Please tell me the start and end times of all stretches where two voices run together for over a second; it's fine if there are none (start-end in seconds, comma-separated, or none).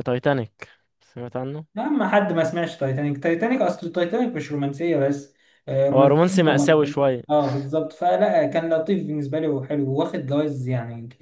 5.9-7.2